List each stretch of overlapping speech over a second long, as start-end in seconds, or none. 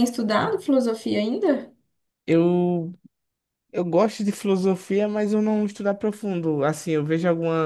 none